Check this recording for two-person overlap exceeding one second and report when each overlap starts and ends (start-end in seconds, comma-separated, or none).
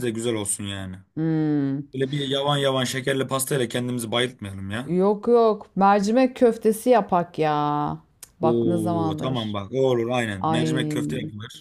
8.4-9.6